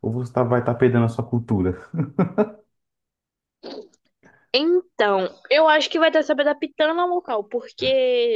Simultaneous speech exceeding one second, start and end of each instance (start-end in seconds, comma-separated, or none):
none